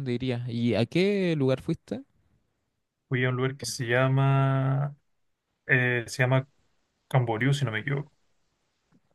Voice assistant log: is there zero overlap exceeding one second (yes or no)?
yes